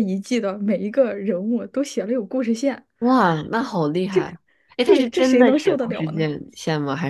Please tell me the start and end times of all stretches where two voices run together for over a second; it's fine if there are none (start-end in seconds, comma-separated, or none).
4.8-6.3